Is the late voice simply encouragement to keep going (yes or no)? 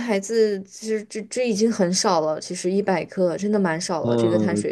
no